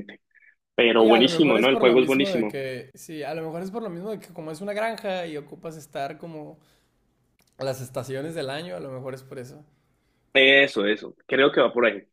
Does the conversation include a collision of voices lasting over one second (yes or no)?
yes